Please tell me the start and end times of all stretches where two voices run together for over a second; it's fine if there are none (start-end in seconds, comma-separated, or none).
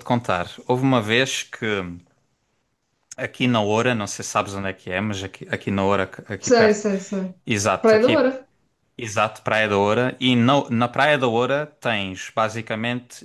none